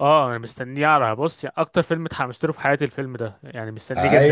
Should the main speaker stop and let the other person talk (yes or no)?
yes